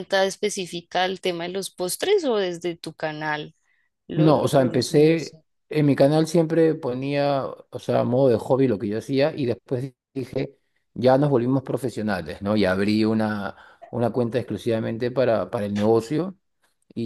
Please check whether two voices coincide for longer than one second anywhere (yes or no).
yes